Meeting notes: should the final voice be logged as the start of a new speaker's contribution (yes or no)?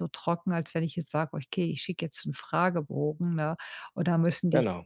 no